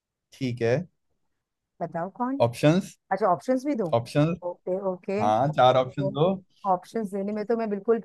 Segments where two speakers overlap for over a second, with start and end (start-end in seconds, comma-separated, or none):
none